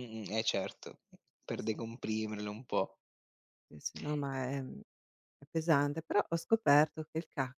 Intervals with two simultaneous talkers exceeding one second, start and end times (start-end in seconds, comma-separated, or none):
none